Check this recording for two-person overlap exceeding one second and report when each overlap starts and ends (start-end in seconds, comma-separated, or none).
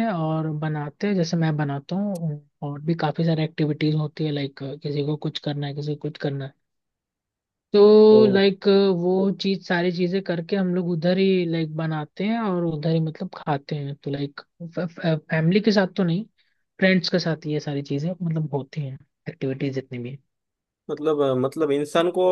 none